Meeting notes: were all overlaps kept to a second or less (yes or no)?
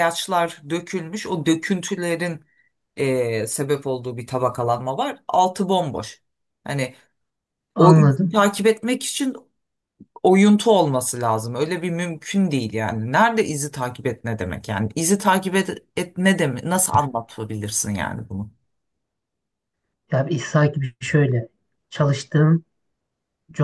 yes